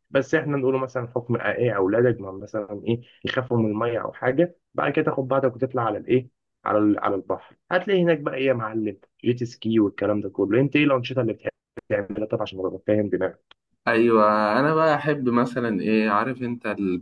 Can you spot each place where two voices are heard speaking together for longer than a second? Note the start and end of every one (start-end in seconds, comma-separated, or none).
none